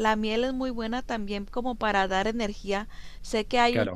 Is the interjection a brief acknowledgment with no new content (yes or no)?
no